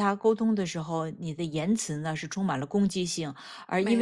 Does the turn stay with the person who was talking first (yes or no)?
yes